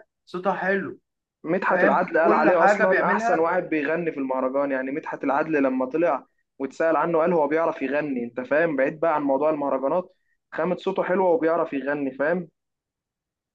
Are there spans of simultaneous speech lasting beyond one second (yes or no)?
yes